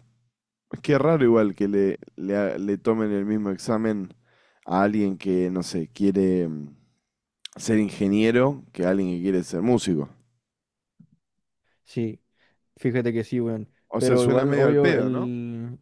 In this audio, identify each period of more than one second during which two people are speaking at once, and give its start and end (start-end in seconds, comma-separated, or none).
13.9-15.3